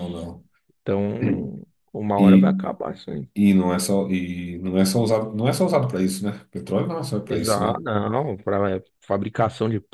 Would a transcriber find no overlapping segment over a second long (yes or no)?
yes